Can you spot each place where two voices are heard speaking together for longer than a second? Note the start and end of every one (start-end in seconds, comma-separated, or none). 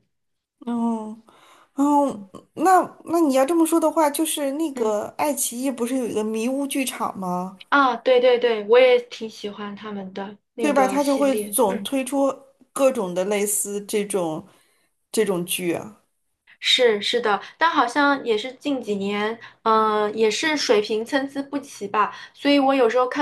10.6-11.9